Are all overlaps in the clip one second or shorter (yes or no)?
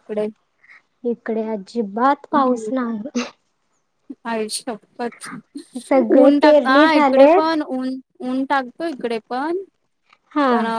no